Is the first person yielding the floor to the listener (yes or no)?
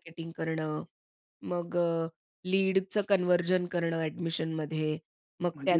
no